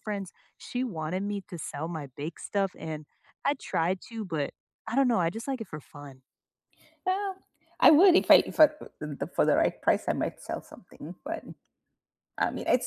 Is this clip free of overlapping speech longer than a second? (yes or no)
yes